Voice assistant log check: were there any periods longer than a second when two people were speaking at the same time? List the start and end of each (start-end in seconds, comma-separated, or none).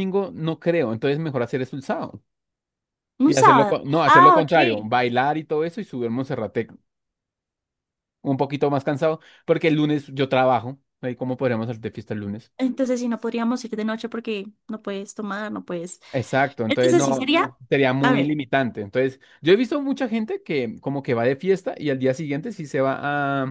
3.2-4.9